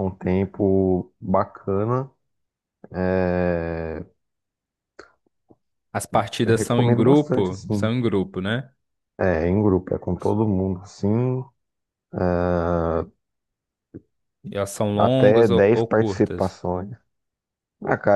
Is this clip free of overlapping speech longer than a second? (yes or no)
no